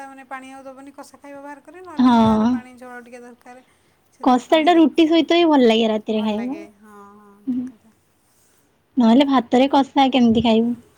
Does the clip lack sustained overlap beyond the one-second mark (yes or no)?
no